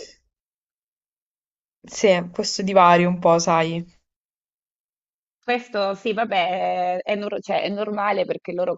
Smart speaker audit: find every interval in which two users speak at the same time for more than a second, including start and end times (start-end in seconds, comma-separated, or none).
none